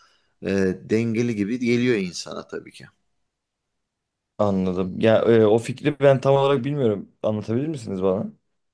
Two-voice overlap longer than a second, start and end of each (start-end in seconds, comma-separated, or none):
none